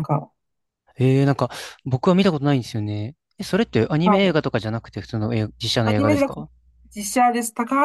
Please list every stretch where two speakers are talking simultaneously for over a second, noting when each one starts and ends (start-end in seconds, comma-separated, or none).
none